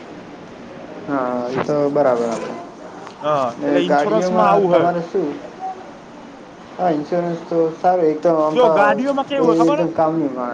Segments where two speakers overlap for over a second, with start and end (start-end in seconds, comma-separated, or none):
3.3-4.9